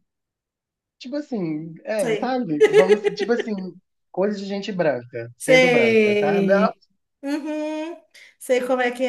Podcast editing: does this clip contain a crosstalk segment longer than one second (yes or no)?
yes